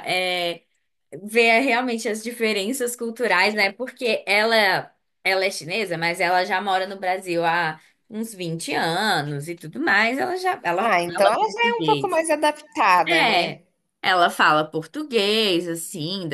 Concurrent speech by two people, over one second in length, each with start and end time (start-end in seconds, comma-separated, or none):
10.8-12.2